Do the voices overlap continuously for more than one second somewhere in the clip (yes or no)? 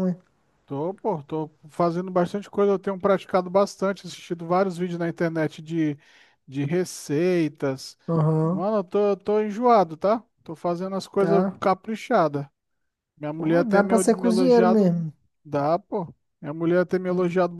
yes